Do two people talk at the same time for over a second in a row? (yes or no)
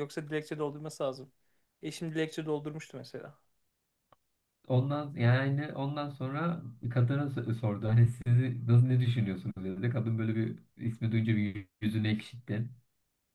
no